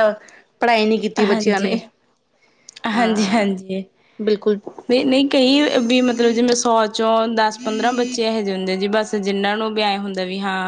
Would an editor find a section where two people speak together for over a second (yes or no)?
no